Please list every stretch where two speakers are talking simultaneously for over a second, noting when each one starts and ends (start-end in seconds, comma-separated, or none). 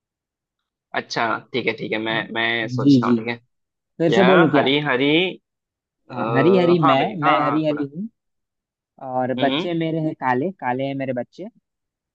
6.1-7.8